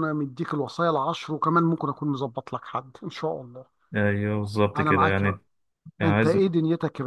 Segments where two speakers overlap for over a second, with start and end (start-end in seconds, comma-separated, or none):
none